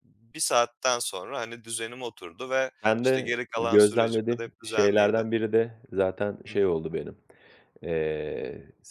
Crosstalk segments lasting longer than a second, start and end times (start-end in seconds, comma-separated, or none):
2.8-5.2